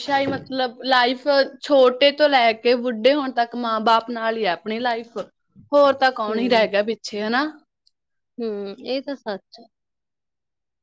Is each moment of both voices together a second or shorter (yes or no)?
yes